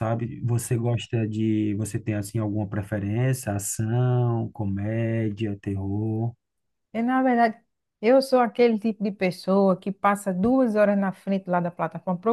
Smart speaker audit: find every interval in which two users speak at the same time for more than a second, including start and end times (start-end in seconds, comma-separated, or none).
none